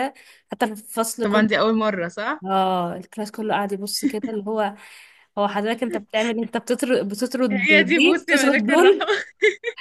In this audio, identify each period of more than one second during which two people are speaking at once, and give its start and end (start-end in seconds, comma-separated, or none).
7.5-9.1